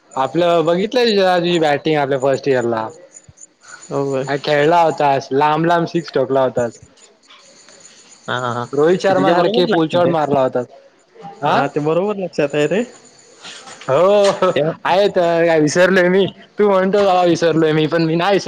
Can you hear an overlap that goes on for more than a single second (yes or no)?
yes